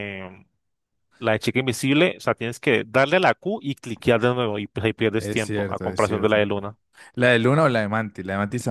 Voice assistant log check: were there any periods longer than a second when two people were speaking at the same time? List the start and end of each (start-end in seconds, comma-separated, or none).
5.2-6.5